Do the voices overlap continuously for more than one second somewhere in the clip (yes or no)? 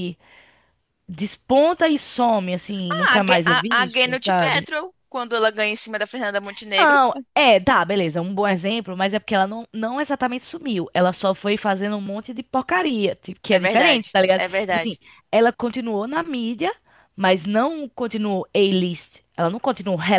yes